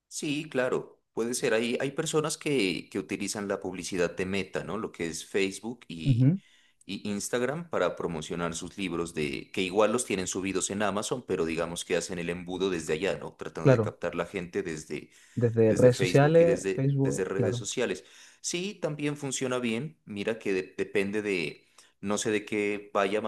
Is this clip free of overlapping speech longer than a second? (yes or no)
no